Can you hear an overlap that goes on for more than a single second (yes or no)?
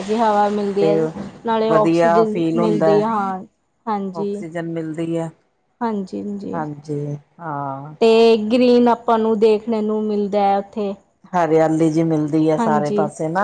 yes